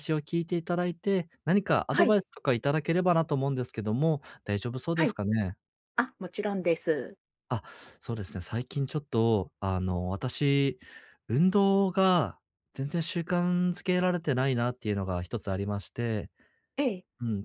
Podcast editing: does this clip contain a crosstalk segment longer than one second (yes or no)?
no